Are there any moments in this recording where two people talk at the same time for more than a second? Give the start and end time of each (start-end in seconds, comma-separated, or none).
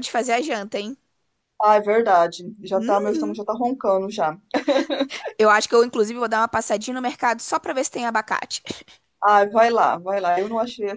none